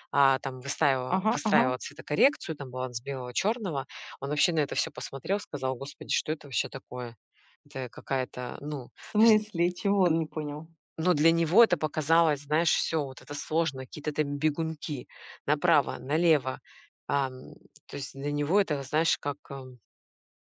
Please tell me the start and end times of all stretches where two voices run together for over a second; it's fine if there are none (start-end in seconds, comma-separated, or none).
none